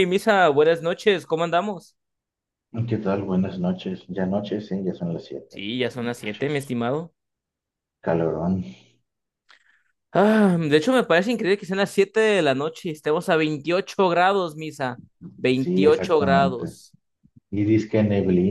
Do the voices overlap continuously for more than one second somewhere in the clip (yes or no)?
yes